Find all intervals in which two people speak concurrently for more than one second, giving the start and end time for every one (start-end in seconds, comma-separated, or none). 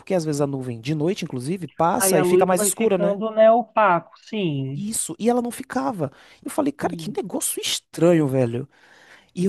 1.9-3.2